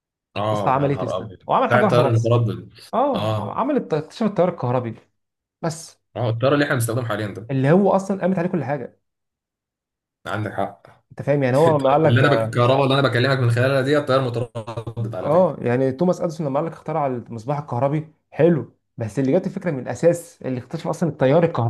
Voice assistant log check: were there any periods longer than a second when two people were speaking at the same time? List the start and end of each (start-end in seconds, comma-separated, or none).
0.5-2.4